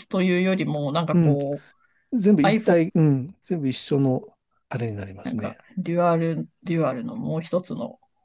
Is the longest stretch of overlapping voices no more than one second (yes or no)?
yes